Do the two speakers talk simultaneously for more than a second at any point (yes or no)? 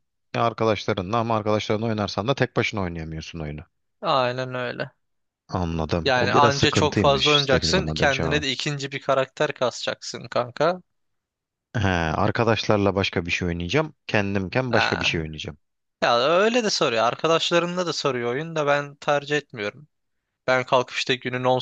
yes